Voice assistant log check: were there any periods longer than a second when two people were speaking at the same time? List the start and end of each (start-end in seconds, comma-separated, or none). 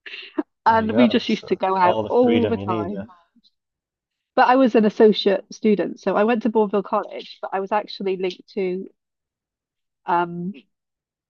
0.7-3.0